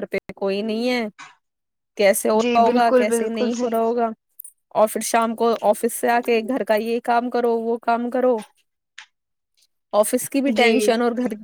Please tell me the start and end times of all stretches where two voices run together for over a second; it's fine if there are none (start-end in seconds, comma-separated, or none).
2.4-3.9